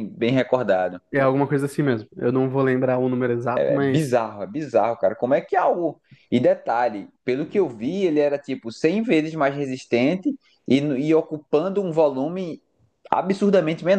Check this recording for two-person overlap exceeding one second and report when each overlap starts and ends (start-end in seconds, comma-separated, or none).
none